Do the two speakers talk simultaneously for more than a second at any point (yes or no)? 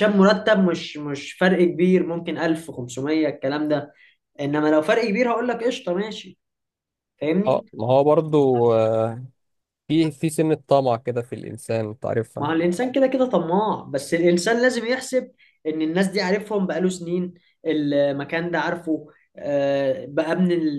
no